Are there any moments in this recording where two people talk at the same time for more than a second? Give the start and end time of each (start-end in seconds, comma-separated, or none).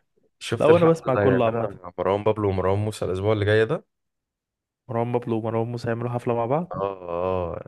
0.6-1.8